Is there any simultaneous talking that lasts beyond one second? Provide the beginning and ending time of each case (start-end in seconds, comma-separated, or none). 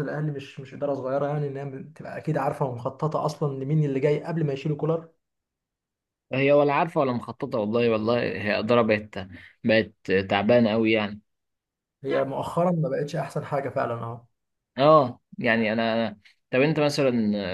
none